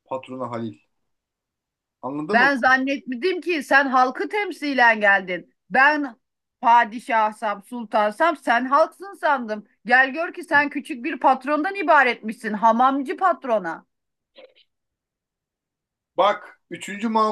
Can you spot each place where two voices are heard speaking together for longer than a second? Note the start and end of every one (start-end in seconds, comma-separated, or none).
none